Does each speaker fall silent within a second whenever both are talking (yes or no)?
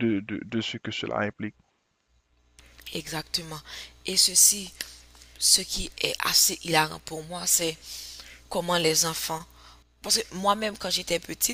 yes